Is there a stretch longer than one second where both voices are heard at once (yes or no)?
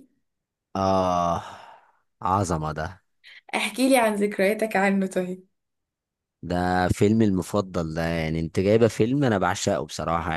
no